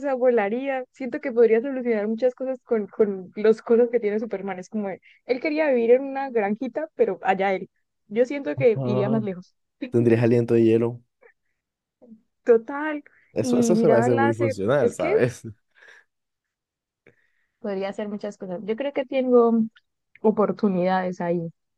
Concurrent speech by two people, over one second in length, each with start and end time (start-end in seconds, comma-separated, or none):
13.4-15.1